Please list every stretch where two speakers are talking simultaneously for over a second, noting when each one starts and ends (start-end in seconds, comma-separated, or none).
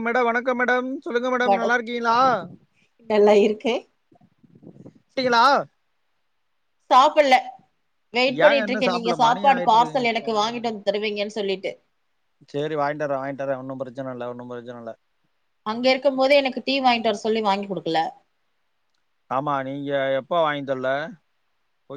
8.4-10.7